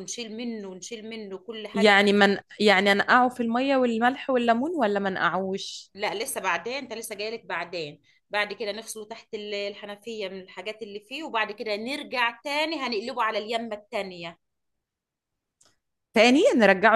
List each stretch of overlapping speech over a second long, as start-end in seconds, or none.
none